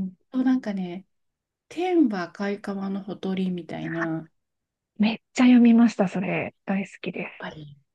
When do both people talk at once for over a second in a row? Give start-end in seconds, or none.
none